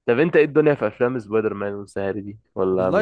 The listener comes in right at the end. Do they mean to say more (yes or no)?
yes